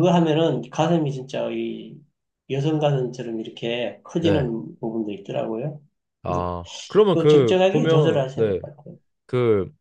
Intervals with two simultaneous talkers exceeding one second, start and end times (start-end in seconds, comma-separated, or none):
7.1-8.6